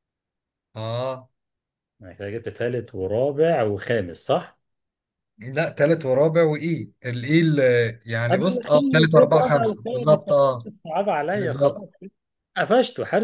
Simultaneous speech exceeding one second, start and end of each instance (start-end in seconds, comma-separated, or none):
8.3-10.7